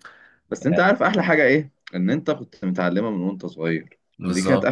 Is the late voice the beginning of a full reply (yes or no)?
no